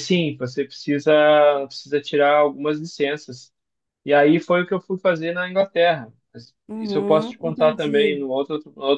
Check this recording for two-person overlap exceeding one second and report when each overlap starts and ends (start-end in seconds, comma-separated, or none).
6.7-8.2